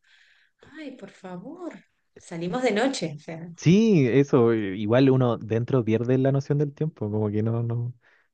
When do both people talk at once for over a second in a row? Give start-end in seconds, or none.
none